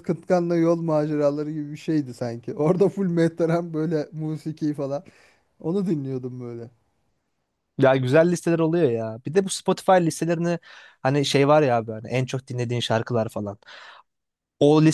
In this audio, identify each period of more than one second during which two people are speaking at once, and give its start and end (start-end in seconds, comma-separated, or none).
none